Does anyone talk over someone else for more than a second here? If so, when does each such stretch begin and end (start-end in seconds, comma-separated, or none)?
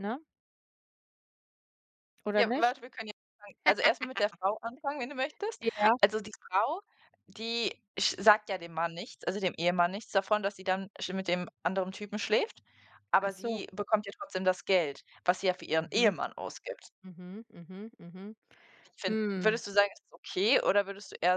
none